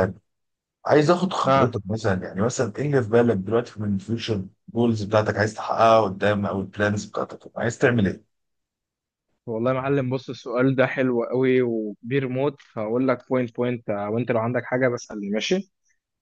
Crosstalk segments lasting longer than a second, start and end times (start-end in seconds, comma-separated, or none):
none